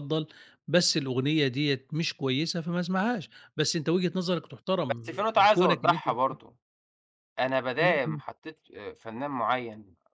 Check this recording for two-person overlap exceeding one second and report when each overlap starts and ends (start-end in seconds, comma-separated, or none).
4.9-6.4